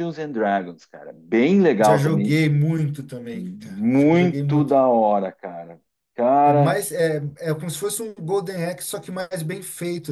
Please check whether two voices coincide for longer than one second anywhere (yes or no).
yes